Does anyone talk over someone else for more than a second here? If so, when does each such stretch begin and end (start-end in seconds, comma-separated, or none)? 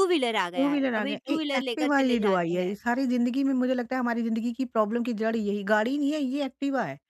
0.6-2.8